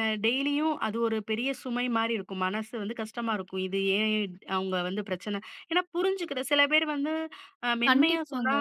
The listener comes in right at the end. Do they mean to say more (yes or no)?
no